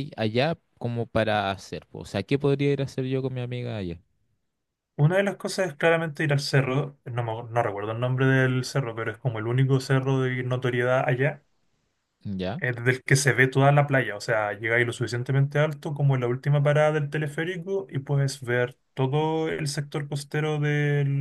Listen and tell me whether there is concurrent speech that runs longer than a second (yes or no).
no